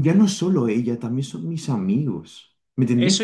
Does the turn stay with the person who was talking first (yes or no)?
no